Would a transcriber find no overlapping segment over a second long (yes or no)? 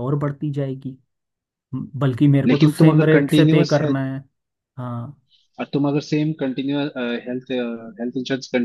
no